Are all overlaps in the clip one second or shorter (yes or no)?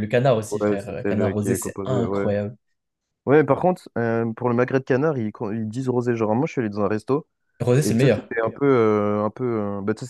no